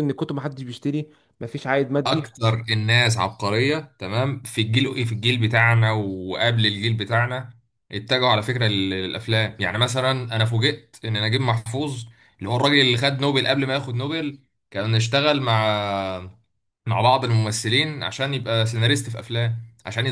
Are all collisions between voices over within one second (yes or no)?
yes